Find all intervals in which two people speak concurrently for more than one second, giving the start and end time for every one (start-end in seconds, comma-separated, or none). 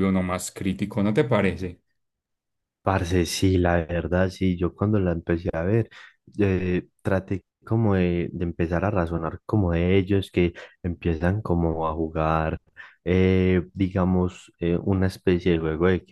none